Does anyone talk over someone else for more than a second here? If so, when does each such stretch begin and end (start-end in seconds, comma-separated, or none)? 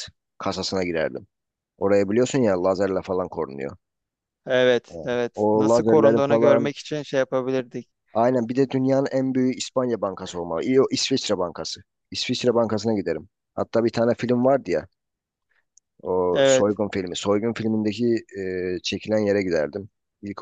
4.9-6.7